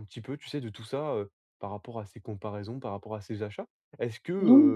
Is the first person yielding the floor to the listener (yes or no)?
no